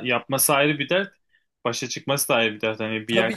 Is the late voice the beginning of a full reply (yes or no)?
yes